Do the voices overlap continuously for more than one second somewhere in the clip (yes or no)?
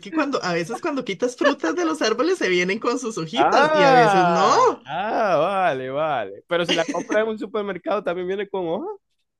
yes